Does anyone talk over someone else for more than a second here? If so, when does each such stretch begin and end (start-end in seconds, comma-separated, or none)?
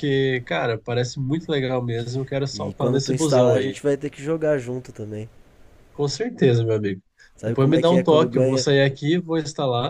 2.5-3.8, 7.4-8.7